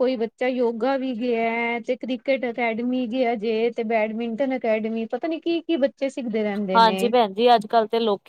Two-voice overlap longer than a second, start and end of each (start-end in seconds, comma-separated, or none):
none